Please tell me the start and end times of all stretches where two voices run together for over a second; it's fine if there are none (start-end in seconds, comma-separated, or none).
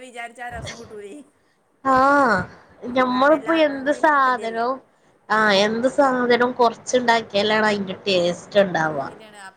3.0-4.6